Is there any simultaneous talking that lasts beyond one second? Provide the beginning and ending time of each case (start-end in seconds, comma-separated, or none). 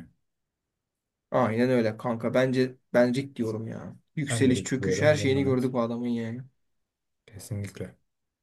4.3-5.7